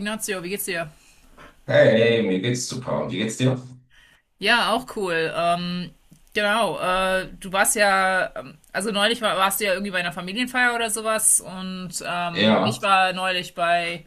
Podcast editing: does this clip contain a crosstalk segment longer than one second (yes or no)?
no